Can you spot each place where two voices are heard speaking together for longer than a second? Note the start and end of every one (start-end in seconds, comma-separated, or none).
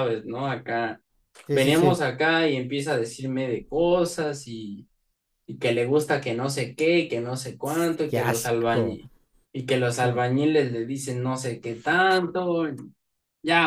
7.6-9.0